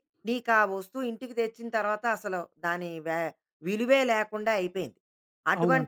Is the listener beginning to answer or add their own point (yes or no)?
no